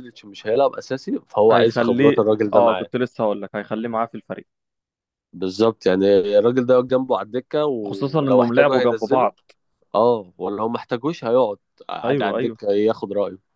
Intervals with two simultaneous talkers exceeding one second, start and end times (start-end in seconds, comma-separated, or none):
1.5-2.9, 7.9-9.3